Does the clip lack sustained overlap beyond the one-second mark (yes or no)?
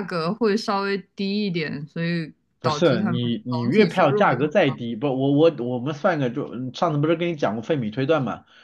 no